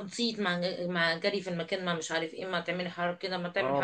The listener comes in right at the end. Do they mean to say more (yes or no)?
no